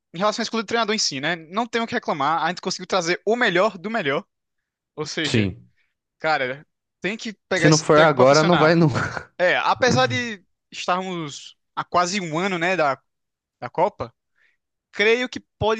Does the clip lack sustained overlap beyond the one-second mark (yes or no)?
no